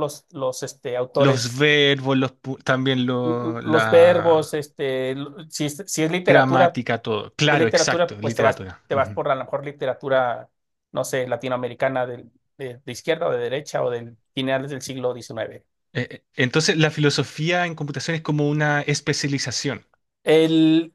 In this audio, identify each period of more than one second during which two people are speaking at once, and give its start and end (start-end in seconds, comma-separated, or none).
3.2-4.6, 7.5-9.2